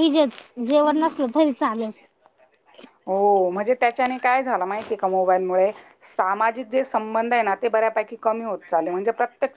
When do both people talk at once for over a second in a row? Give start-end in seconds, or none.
none